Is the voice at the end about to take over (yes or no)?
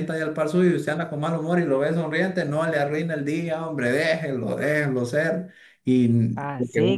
yes